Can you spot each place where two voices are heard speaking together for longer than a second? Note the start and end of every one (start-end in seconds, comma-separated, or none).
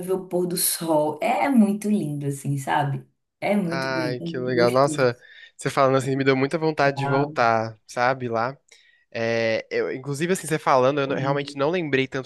3.7-5.1